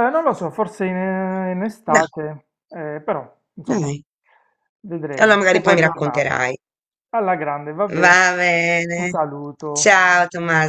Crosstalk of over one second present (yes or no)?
yes